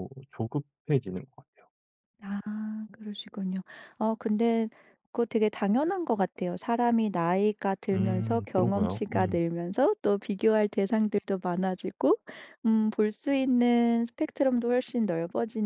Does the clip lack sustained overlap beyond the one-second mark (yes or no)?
no